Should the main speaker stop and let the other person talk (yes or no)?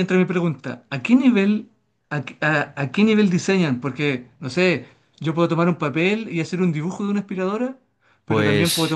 no